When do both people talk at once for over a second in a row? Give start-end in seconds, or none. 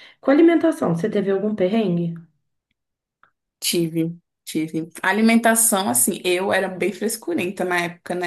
none